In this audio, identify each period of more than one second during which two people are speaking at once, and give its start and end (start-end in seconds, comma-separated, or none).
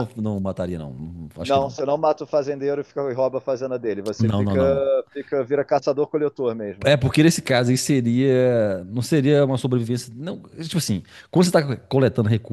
none